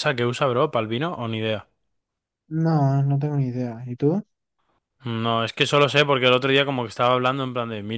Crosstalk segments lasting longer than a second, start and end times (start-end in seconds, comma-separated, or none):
none